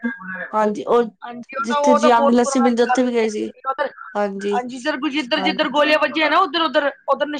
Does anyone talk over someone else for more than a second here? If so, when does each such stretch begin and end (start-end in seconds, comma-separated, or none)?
1.7-3.5